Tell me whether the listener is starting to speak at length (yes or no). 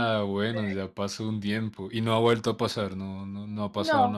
yes